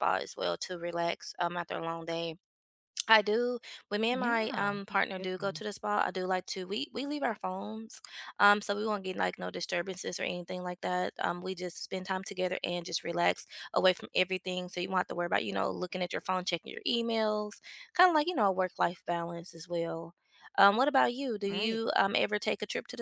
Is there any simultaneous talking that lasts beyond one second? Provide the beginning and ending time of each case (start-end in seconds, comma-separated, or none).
4.1-5.6